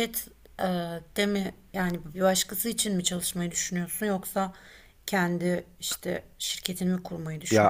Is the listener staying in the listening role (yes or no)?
no